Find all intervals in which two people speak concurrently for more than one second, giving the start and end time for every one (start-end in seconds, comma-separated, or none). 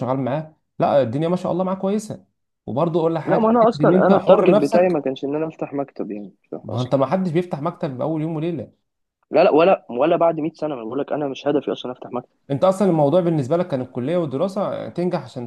3.2-4.9